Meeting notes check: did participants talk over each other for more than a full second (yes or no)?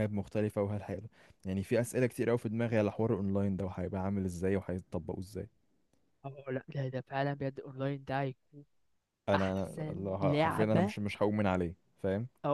yes